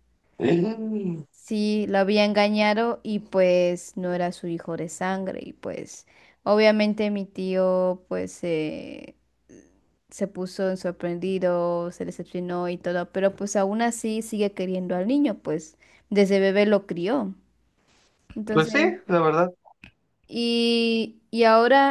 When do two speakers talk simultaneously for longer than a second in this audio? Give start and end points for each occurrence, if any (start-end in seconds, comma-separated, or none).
none